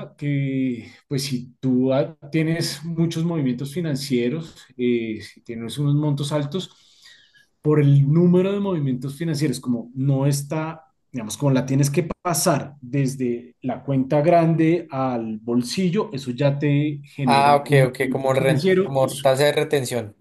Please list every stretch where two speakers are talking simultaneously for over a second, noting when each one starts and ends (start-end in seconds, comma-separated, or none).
17.2-19.2